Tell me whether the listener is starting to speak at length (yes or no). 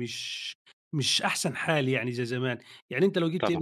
no